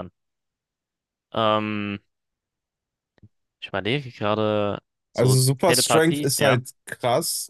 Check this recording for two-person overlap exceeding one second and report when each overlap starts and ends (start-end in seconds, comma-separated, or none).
5.1-6.6